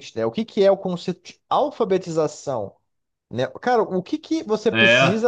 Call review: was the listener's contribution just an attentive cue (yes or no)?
yes